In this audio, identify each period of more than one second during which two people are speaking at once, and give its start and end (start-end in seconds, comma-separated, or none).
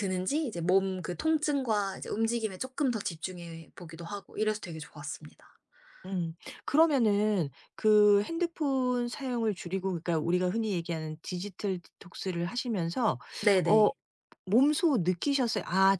none